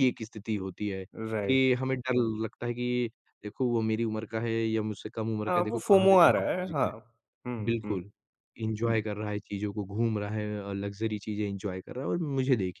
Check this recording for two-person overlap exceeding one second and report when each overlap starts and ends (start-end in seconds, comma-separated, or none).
5.5-6.9